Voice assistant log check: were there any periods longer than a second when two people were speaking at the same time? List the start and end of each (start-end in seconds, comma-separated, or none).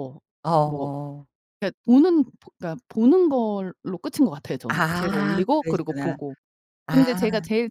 4.7-6.2